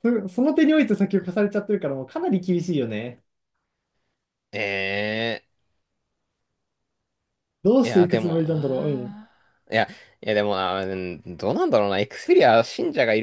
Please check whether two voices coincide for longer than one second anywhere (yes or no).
yes